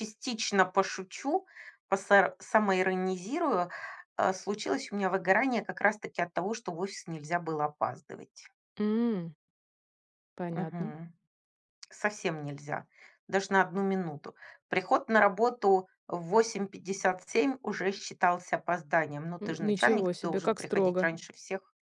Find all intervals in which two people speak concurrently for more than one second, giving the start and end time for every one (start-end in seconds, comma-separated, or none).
19.4-21.1